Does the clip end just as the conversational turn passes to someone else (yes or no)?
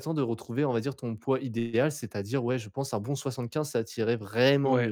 yes